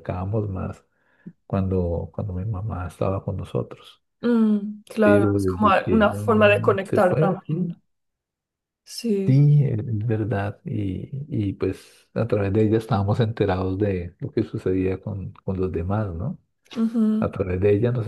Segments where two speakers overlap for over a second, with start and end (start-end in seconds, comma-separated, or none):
5.0-7.7